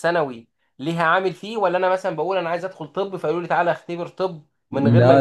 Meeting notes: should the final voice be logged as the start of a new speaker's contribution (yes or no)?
yes